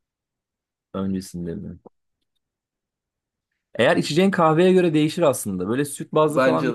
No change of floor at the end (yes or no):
yes